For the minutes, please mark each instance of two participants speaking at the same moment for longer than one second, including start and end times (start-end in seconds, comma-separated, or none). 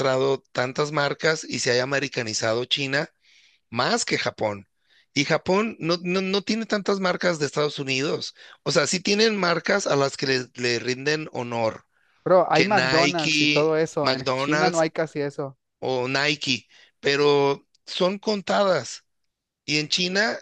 12.5-14.8